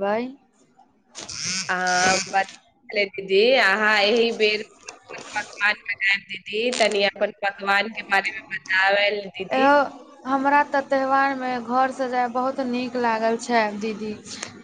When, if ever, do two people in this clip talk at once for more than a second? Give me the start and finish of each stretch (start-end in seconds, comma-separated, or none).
none